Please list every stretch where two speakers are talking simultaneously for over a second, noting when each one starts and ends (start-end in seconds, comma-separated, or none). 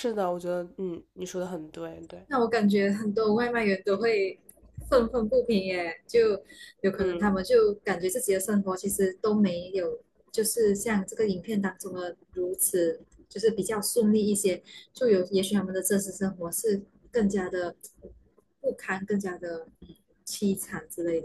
none